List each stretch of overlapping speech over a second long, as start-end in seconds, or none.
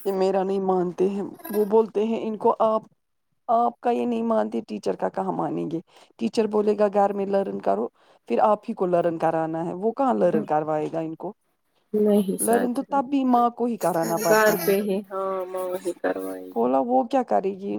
none